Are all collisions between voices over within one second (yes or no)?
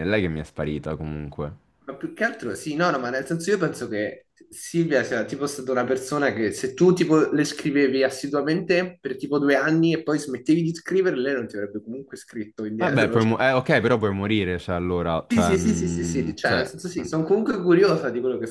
no